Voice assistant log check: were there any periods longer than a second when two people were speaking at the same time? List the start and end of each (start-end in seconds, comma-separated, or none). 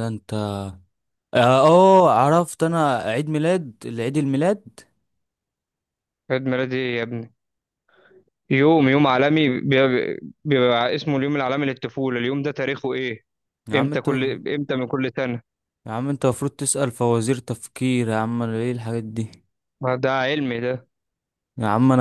none